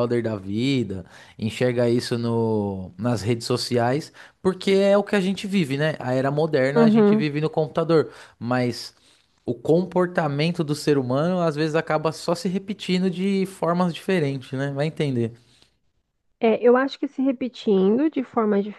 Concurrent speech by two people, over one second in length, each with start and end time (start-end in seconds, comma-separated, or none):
none